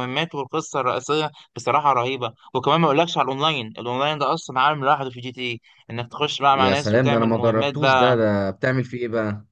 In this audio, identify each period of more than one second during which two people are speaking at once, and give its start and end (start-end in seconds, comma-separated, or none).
6.5-8.1